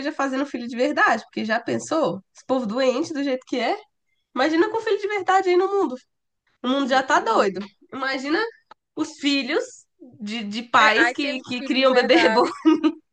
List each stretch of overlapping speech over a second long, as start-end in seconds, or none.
10.8-12.5